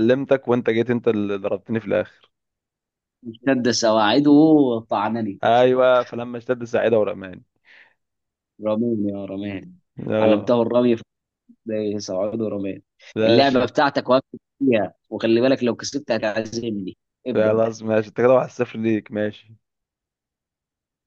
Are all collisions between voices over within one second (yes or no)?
yes